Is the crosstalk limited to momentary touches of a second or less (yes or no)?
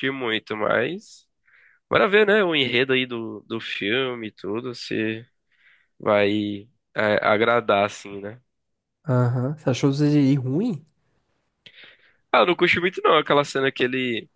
yes